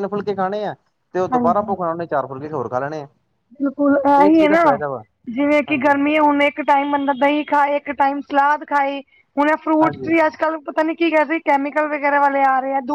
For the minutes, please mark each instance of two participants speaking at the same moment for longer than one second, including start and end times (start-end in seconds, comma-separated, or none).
none